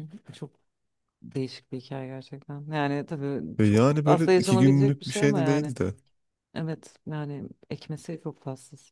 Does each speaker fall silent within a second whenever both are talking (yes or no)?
no